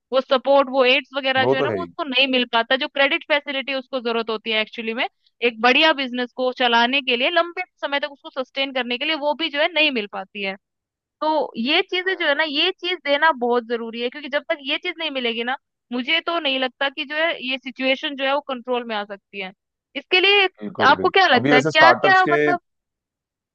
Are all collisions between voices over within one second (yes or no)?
no